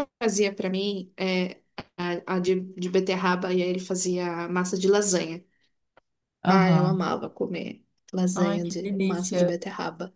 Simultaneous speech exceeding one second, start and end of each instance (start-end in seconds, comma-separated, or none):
8.3-9.6